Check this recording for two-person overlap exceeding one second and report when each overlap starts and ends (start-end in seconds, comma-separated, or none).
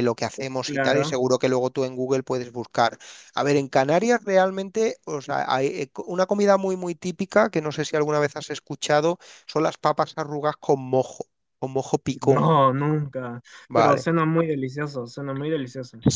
none